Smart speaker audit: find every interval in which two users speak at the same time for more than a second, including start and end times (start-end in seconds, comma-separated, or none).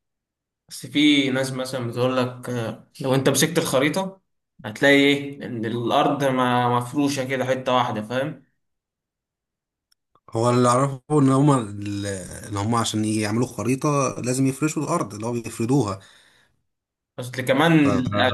none